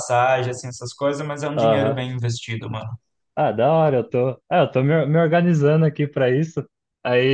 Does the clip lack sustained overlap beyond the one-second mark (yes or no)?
yes